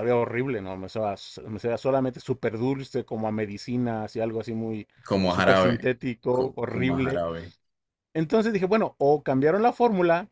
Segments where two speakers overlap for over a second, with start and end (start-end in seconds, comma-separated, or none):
5.3-7.2